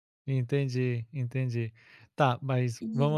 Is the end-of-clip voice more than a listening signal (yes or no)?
no